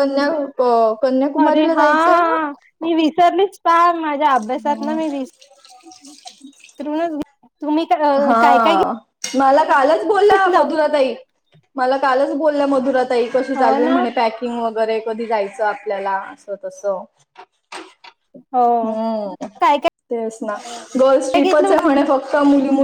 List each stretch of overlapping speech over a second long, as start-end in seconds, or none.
none